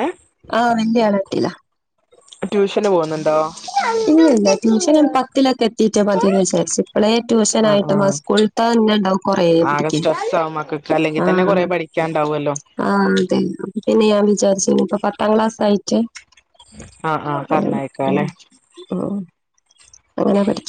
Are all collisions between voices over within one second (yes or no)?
yes